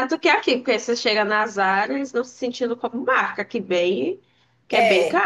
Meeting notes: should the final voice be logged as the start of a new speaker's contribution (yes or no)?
yes